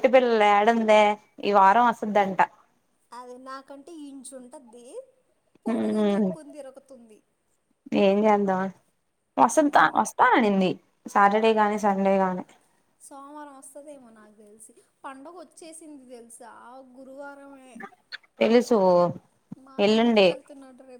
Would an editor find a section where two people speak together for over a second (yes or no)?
no